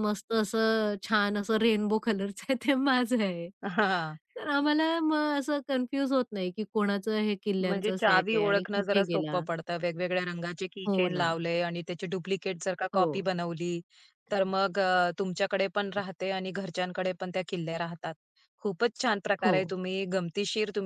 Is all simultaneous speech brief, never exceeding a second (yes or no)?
no